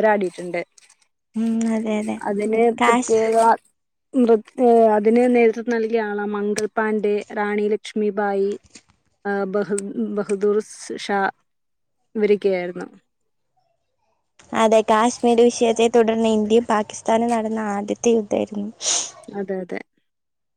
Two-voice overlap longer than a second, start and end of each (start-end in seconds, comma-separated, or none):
none